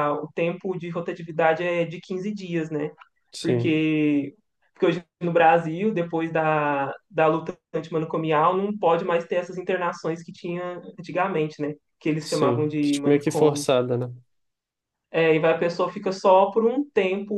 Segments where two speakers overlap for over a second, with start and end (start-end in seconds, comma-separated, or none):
12.2-13.7